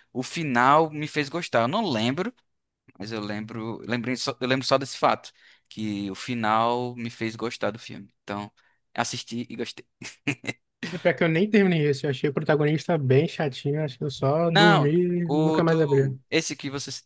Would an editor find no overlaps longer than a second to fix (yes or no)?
no